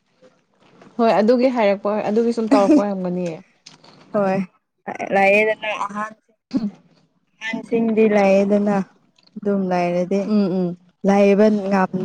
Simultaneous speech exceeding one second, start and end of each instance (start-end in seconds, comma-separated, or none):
none